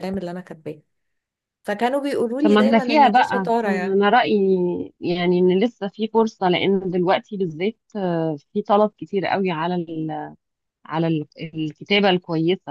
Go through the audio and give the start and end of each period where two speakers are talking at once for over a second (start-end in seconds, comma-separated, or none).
2.4-4.0